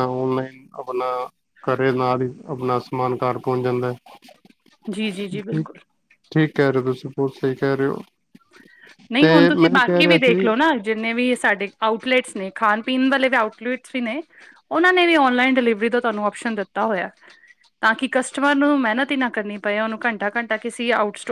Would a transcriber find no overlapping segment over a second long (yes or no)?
yes